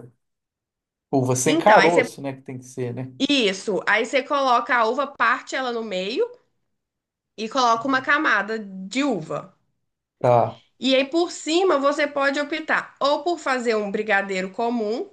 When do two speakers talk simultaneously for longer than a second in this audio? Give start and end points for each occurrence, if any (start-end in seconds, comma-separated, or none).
none